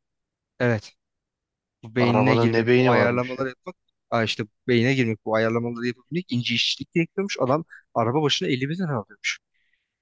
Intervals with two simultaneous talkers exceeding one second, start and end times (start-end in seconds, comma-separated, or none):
2.0-3.5